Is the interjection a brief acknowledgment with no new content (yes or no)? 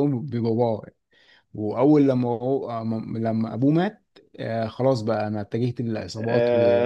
yes